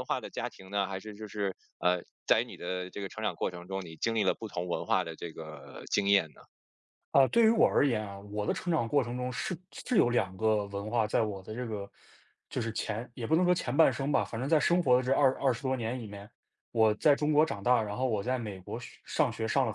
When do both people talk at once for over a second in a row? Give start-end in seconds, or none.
none